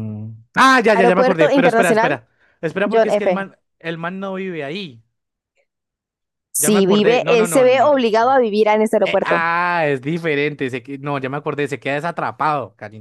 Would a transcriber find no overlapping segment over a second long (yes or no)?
no